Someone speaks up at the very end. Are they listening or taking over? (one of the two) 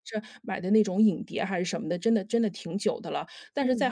listening